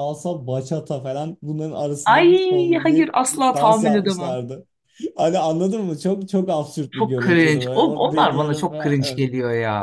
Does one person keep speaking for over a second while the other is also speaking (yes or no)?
yes